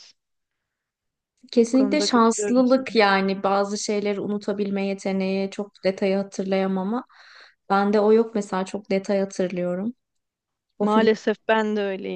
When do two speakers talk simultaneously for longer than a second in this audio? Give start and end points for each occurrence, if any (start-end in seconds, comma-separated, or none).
1.6-2.9